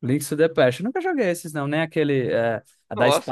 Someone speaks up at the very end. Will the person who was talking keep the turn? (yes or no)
yes